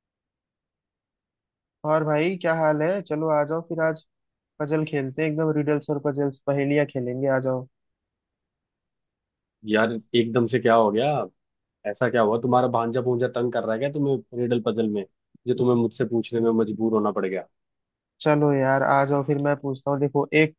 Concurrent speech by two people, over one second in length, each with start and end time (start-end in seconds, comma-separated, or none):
none